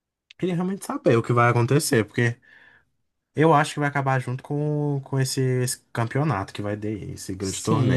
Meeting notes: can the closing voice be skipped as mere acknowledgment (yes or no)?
no